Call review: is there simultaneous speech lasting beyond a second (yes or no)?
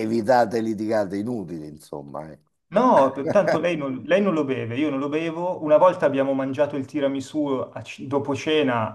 no